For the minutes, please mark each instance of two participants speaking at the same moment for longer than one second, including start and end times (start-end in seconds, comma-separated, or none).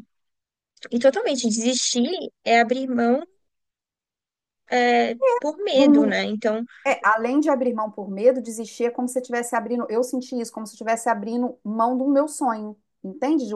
none